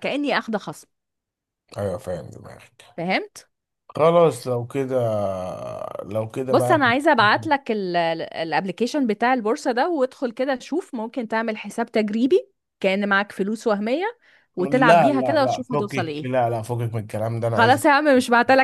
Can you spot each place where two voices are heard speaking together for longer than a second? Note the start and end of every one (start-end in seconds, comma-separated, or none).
14.6-16.3